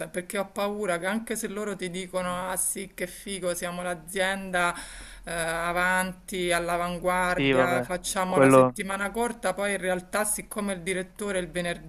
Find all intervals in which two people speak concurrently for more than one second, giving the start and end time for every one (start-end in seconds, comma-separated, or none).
7.3-8.8